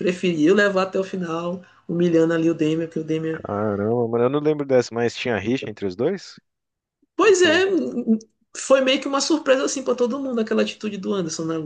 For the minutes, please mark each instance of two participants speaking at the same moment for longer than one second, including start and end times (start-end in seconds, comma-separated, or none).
none